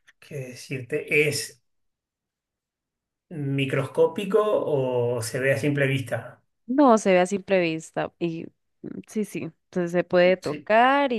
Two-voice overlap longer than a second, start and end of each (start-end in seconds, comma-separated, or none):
none